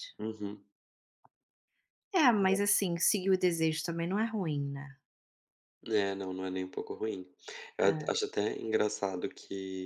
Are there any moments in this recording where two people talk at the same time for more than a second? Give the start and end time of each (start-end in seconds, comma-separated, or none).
none